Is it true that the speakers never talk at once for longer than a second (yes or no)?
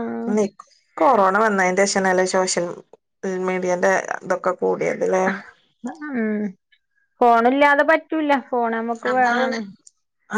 yes